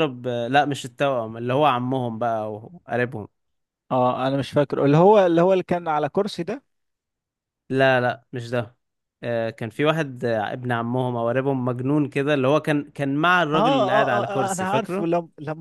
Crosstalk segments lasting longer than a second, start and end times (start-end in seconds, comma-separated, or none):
13.5-15.1